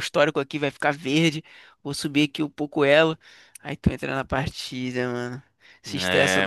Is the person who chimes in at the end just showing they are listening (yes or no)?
yes